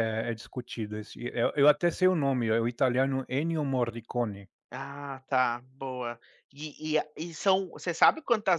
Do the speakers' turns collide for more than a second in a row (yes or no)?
no